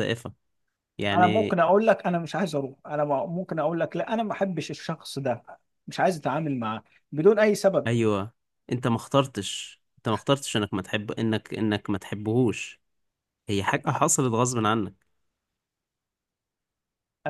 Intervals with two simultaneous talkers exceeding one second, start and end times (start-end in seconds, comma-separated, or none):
none